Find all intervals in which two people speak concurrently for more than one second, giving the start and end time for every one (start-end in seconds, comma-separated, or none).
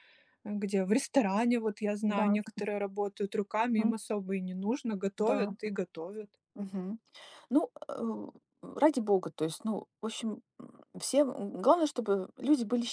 none